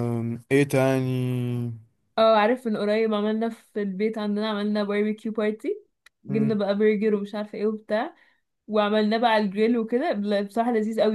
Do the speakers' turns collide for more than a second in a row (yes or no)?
no